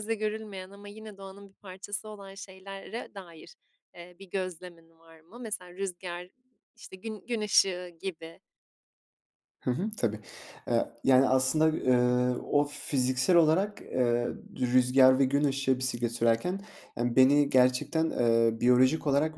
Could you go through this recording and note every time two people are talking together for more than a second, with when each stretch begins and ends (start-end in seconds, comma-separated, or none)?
none